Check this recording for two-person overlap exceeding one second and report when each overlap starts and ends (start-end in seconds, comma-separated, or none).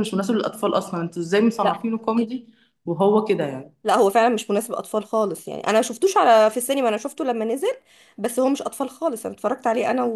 none